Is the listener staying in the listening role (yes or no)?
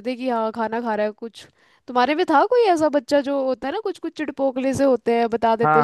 no